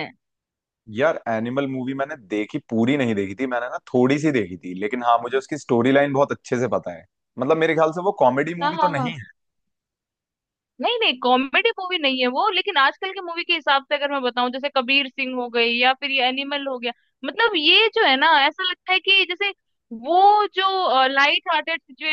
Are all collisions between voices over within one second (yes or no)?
yes